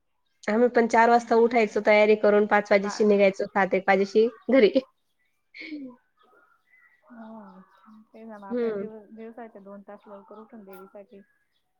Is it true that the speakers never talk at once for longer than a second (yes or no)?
yes